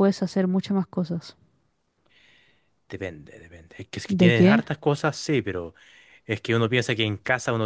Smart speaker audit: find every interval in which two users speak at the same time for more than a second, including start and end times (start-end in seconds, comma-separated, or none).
none